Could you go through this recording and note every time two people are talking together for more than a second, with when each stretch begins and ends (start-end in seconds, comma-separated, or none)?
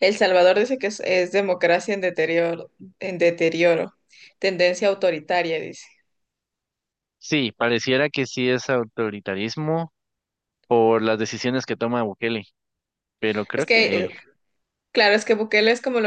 none